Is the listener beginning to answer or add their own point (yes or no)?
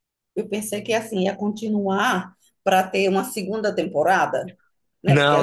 no